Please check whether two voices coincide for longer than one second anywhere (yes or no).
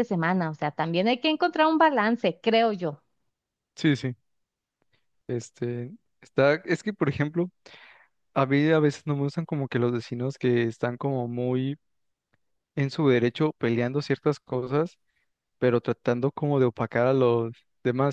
no